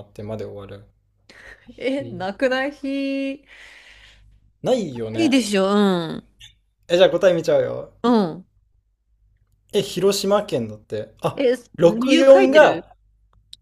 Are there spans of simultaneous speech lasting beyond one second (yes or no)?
yes